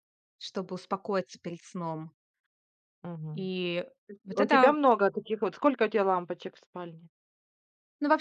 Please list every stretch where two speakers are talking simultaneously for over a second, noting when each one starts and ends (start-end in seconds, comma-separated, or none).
none